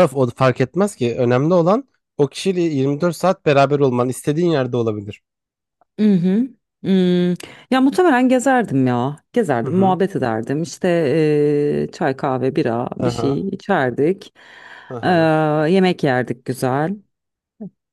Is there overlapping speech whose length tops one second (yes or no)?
no